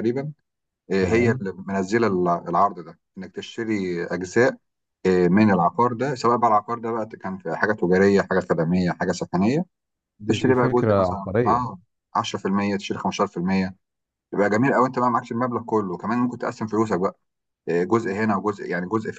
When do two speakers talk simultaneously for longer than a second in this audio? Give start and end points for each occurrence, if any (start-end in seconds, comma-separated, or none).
10.3-11.7